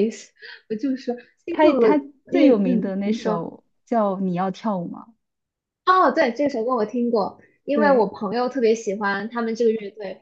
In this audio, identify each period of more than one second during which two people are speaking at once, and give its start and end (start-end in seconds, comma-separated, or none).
1.5-3.5